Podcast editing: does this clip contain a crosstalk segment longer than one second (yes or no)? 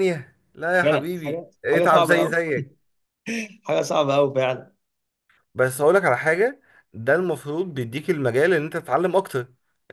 yes